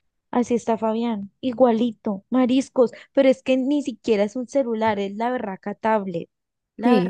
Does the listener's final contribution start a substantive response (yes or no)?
yes